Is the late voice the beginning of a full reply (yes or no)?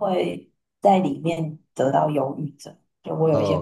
yes